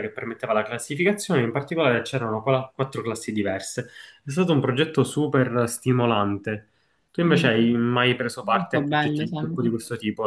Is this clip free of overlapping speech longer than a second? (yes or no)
no